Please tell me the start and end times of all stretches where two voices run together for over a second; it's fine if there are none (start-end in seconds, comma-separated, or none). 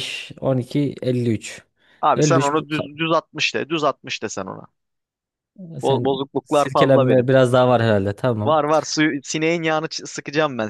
5.8-7.3